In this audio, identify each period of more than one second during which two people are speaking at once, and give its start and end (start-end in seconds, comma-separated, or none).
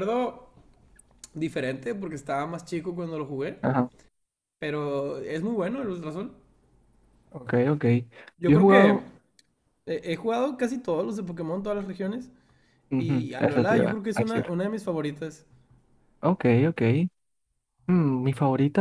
13.0-14.5